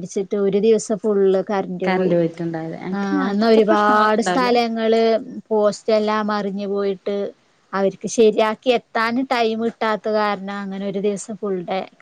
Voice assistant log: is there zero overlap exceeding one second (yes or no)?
no